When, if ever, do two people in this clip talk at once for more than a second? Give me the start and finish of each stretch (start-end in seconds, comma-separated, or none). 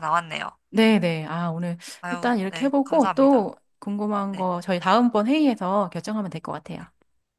2.0-3.5